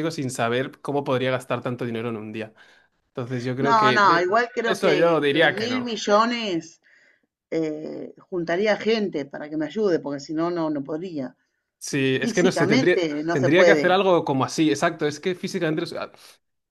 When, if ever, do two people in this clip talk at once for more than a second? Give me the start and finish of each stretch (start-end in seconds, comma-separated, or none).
3.6-5.9, 12.2-13.9